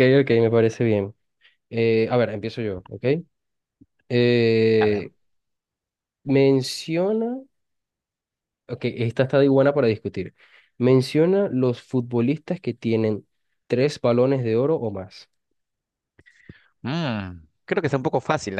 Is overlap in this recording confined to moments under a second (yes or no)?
yes